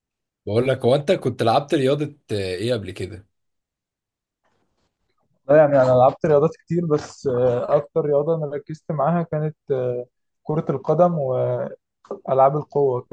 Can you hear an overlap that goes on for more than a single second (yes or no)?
no